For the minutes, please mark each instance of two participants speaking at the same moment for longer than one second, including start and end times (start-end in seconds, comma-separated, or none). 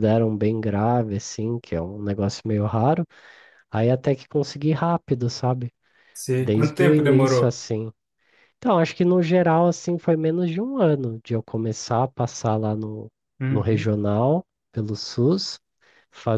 6.4-7.6